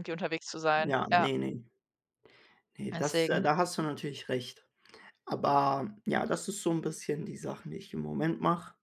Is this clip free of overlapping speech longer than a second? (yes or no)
yes